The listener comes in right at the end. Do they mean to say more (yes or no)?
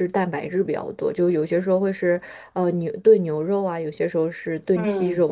yes